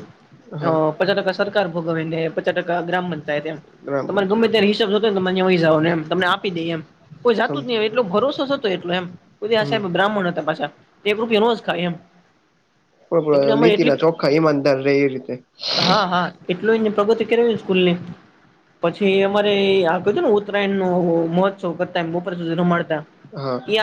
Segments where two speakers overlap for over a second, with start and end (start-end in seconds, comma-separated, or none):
none